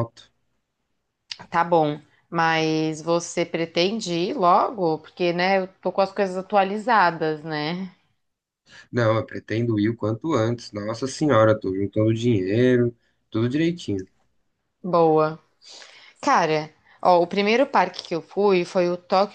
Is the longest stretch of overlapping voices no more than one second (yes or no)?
yes